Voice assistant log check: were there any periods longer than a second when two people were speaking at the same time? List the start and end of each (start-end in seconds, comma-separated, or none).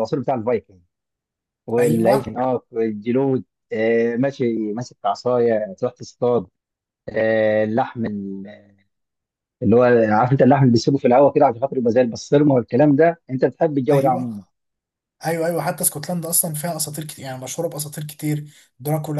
none